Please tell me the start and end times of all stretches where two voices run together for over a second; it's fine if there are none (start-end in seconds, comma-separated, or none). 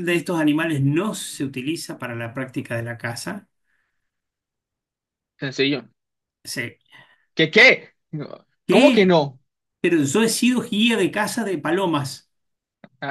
none